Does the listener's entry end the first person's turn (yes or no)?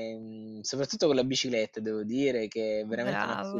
no